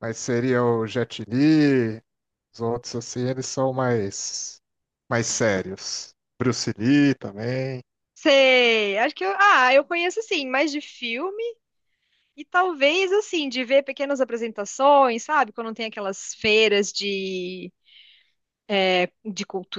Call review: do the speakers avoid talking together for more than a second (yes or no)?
yes